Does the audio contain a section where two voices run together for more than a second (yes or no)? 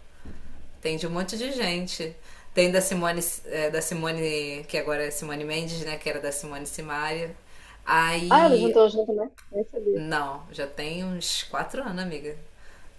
no